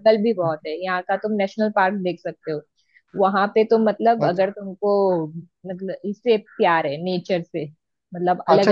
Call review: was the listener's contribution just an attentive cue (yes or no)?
no